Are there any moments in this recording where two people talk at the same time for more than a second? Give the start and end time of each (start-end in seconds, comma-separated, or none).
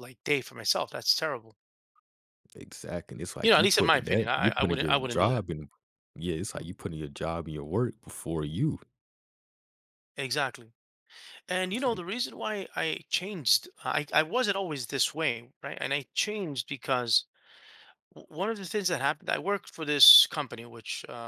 3.4-5.5